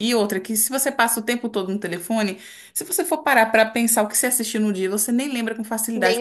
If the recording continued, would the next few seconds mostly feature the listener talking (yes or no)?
no